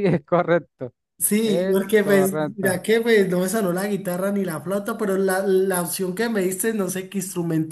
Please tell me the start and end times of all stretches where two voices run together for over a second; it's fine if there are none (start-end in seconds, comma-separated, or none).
1.4-2.7